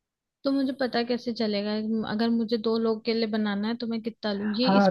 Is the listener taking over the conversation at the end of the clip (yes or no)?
yes